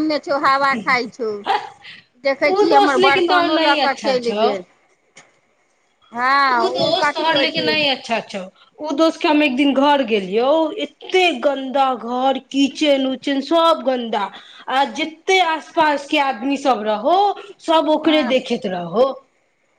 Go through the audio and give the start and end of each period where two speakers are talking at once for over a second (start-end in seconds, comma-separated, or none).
2.5-4.5